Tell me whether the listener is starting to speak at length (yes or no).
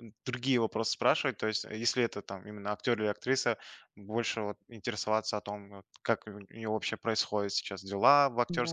no